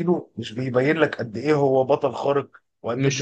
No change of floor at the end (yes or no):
yes